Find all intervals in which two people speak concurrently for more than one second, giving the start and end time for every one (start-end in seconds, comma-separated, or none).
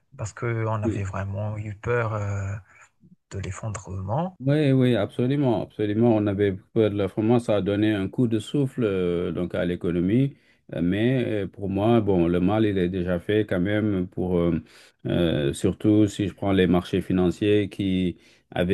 none